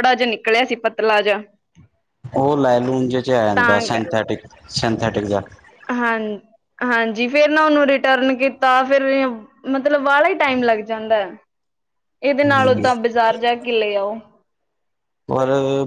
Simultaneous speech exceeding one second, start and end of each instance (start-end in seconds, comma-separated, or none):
none